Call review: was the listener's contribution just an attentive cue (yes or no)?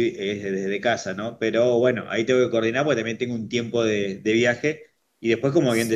yes